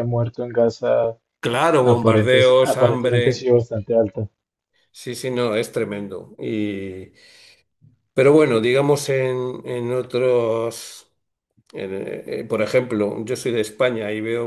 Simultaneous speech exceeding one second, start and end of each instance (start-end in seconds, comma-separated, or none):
1.8-3.5